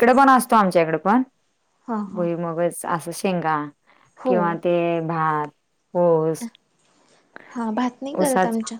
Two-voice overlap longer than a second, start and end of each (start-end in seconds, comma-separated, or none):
none